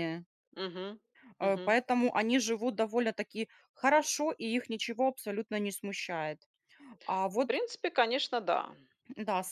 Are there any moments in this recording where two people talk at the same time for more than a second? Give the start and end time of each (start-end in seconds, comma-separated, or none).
none